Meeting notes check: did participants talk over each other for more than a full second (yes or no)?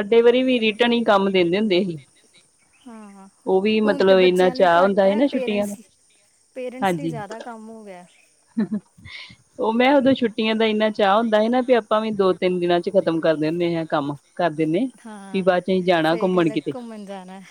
yes